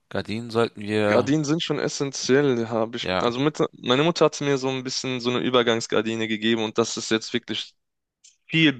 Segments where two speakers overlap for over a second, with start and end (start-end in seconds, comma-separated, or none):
none